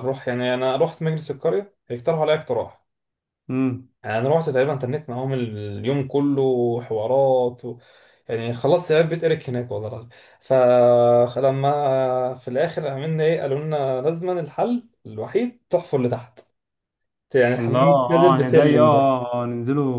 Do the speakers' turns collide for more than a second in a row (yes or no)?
yes